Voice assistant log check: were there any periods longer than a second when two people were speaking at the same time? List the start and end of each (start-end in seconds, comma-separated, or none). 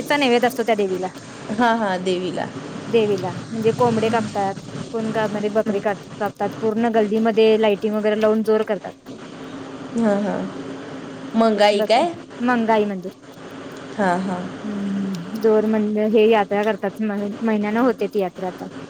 none